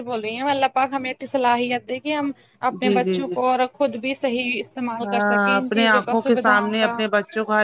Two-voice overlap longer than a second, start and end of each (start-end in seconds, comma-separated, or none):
5.0-6.9